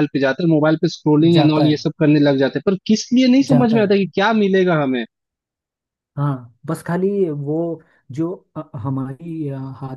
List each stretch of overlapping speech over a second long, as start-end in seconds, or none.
none